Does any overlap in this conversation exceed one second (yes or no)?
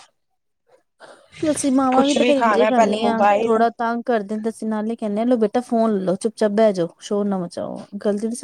yes